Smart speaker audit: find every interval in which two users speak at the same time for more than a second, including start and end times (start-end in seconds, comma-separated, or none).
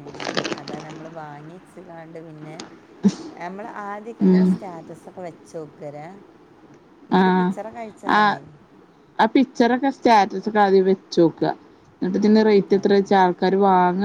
none